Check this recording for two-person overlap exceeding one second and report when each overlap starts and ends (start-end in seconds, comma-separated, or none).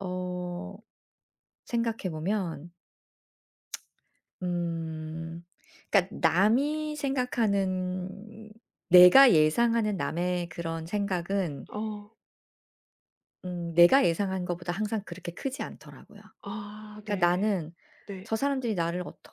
none